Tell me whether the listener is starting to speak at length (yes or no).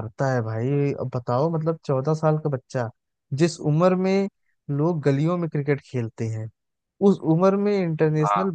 no